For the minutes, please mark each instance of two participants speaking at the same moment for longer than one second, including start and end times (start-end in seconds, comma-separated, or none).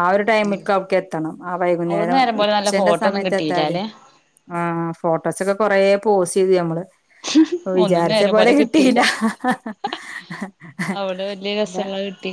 1.9-3.8